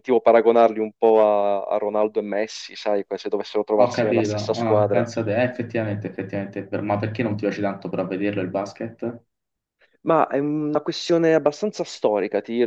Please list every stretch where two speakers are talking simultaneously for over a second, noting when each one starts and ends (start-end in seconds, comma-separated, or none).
3.8-5.1